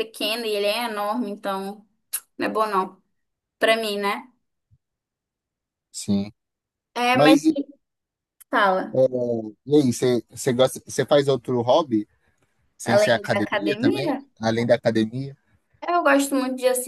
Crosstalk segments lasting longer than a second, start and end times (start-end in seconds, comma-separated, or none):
12.8-14.2